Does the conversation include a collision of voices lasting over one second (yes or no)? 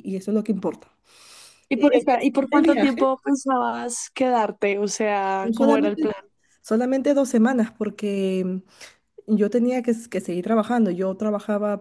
yes